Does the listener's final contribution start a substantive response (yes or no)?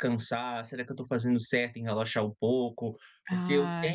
no